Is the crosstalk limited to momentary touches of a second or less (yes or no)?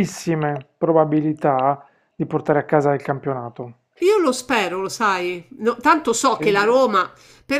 yes